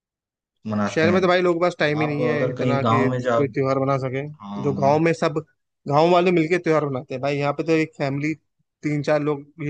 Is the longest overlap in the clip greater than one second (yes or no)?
yes